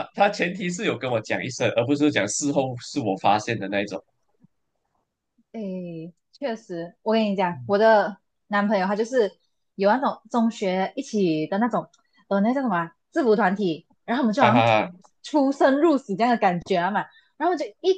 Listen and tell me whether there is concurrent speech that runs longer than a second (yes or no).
no